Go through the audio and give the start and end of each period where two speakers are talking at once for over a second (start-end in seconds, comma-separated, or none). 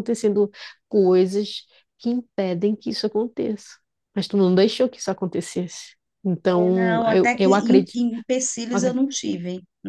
6.5-8.0